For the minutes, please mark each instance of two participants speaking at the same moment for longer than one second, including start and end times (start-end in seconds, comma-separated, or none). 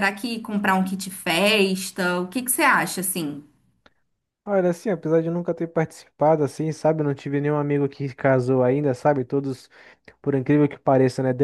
none